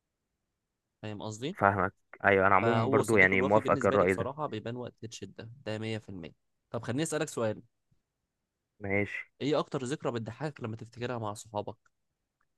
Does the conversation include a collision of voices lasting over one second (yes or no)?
yes